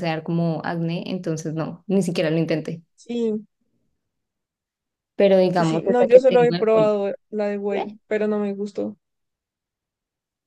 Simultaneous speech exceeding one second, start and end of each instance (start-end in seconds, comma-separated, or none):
5.5-6.9